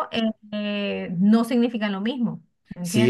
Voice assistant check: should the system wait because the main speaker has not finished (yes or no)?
no